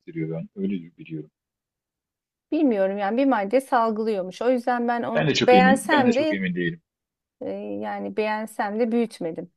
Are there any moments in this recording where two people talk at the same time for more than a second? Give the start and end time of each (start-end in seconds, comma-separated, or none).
5.1-6.5